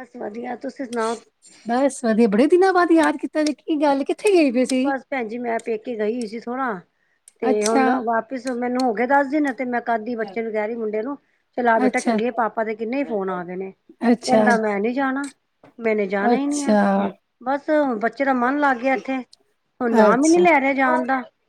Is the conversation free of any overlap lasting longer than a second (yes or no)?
yes